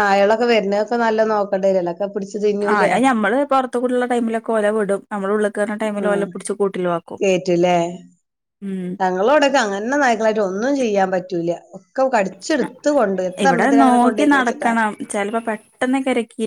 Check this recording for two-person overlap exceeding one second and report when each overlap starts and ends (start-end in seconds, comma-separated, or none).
none